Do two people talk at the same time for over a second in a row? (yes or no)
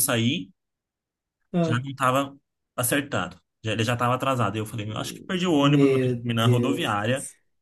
yes